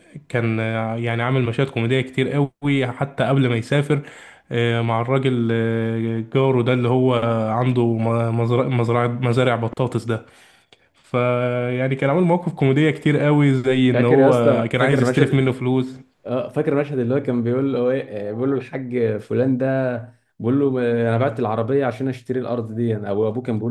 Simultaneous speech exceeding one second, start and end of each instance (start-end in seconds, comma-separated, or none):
13.9-15.4